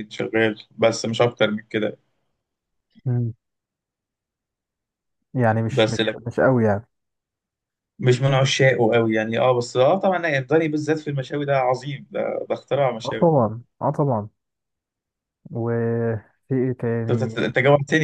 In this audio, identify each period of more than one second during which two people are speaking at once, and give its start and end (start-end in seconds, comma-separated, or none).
none